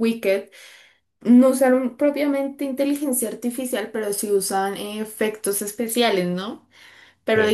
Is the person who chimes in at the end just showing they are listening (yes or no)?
yes